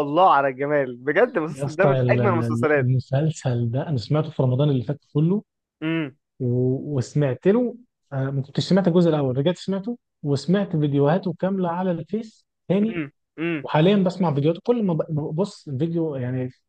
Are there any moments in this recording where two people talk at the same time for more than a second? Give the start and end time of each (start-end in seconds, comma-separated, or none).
1.5-2.9